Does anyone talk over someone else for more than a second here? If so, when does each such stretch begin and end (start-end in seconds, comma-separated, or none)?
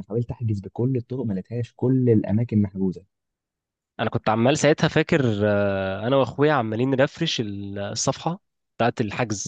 none